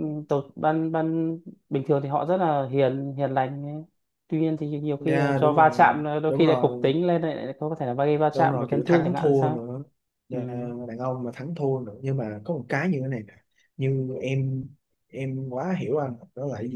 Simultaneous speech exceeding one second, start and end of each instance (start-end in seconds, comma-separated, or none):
5.0-6.9, 8.3-9.7